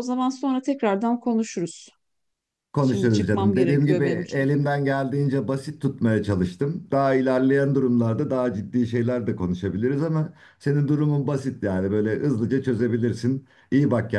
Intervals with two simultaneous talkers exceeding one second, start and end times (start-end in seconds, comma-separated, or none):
2.8-4.6